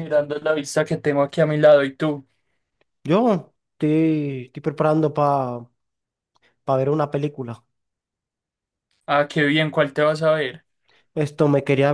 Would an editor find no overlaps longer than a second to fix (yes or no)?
yes